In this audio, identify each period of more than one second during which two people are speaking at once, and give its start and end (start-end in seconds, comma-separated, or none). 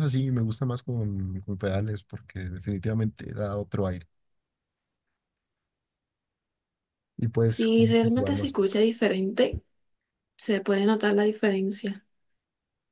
7.5-8.8